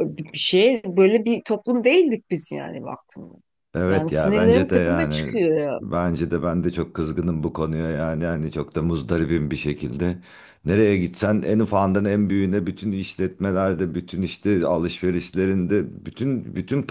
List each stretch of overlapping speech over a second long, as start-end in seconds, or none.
3.9-5.3